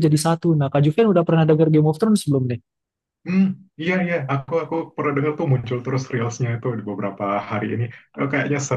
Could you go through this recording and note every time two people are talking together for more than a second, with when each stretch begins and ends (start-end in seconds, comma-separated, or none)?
none